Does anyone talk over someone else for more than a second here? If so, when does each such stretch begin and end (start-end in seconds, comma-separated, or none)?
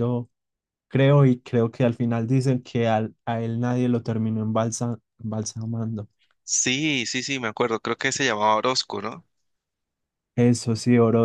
none